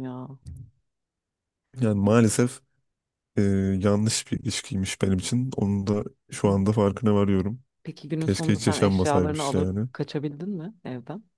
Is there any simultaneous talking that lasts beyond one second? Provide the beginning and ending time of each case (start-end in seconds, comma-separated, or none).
8.2-9.9